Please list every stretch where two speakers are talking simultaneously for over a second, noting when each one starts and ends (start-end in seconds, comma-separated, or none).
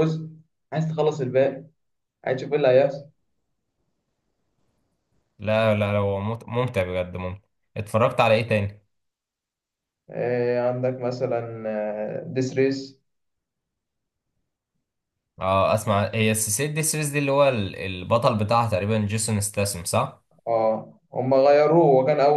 none